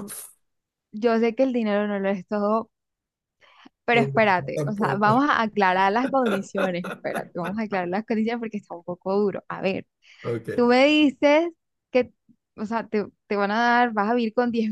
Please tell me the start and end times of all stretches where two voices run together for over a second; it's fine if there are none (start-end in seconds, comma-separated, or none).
3.9-5.2